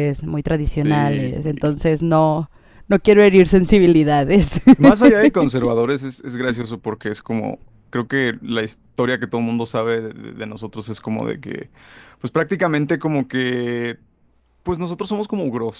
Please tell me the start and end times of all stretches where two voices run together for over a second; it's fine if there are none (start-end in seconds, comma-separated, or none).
none